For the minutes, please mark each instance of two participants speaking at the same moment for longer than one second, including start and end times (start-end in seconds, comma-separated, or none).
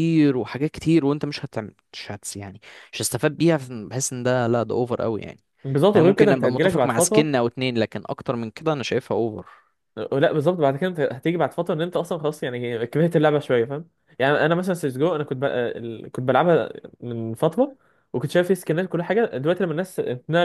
5.9-7.3